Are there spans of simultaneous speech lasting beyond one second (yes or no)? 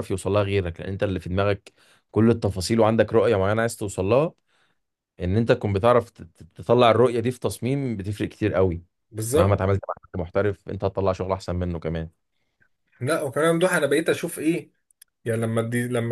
no